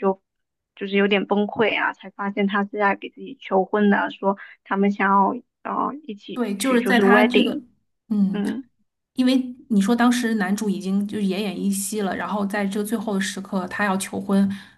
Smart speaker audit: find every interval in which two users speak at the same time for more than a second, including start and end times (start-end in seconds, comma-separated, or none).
6.3-7.6